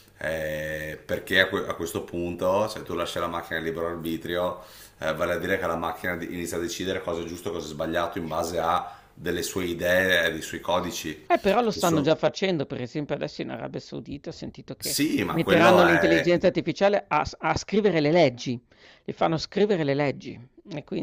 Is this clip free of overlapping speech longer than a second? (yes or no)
no